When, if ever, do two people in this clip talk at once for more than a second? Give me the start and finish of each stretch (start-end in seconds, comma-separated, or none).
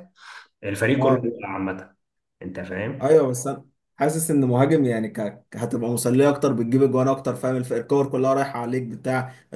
none